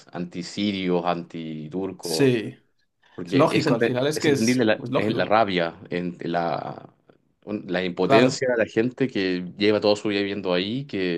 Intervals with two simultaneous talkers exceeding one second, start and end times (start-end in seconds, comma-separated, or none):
3.2-5.3